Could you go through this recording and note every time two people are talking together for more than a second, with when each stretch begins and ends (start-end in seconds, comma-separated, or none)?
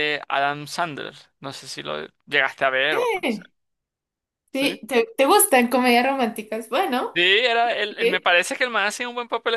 none